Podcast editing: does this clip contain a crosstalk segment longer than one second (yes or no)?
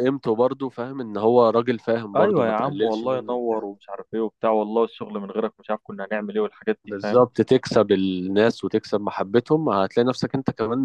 yes